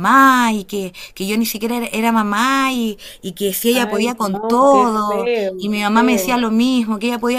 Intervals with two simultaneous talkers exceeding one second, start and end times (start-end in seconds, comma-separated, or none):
3.7-6.4